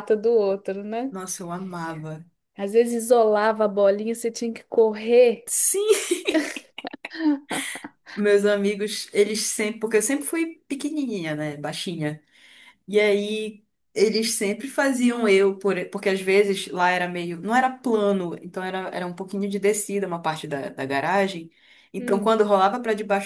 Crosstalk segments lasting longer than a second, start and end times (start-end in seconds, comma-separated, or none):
none